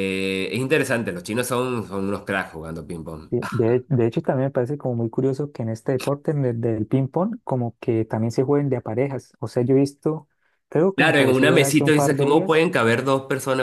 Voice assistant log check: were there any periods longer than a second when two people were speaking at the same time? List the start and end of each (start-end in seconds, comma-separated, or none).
10.9-12.6